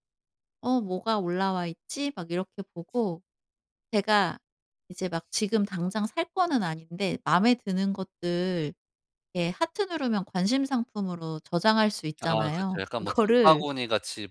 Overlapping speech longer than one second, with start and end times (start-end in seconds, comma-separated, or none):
12.2-13.7